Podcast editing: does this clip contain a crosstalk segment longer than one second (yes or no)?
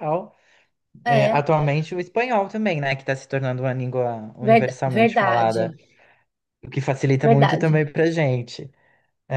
yes